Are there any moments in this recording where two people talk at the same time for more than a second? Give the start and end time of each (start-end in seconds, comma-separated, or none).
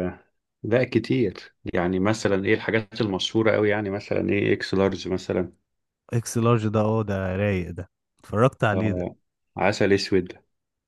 none